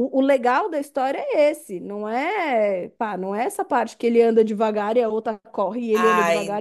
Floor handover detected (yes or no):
yes